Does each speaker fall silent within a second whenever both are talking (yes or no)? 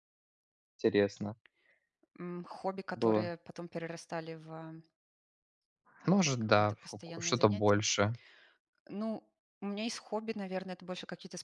no